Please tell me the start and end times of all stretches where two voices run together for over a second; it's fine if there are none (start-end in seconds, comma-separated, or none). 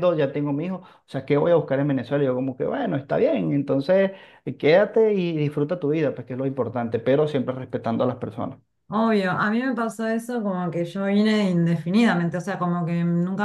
none